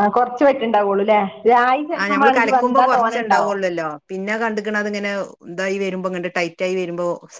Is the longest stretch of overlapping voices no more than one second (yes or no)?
no